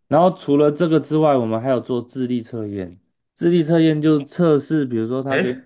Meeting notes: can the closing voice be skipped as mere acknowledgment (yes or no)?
yes